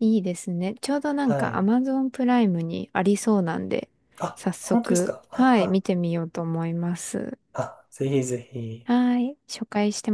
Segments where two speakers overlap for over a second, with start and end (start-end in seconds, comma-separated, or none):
4.3-5.8